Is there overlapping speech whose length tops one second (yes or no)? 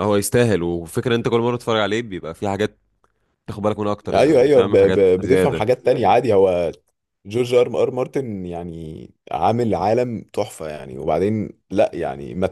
yes